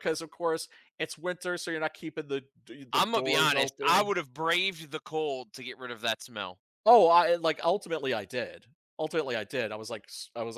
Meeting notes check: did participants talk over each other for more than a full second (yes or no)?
yes